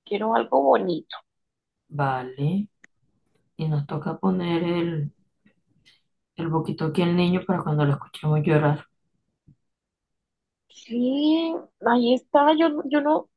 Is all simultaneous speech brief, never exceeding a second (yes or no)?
yes